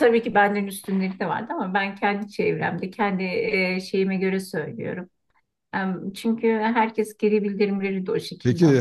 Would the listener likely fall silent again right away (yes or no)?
no